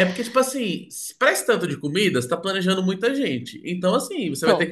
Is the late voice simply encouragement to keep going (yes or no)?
yes